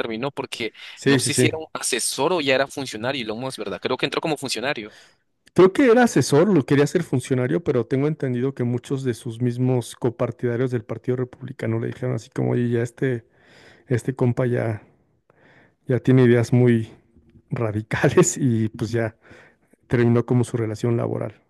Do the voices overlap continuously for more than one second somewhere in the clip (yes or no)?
no